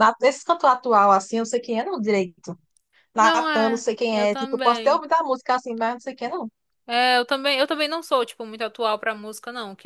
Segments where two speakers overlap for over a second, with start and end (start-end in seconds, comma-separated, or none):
3.2-5.0